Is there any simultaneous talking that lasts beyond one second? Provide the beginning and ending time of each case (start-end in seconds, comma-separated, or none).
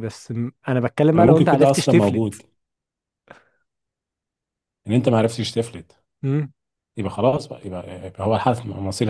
1.2-2.4